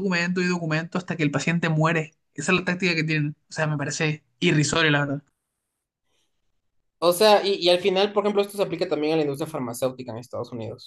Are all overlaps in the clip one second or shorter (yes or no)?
yes